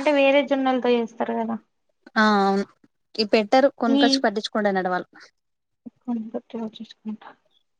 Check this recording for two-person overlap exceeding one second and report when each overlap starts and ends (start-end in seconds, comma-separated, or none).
none